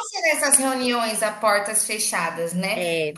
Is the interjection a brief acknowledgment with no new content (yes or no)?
yes